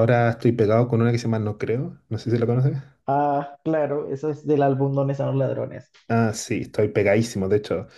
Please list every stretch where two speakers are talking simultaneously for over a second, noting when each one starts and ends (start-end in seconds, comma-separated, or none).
none